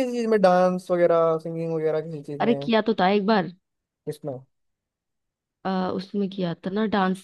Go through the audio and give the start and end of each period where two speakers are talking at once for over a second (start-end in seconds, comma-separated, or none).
none